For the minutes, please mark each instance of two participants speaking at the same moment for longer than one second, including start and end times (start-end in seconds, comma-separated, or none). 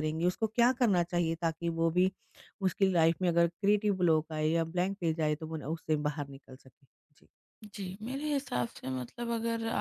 none